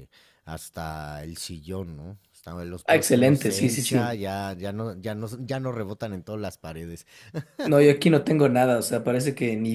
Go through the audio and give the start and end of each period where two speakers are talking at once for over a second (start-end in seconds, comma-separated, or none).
2.9-4.1